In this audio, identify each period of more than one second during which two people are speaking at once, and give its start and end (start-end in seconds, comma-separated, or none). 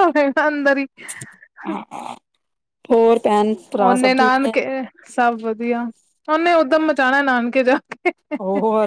none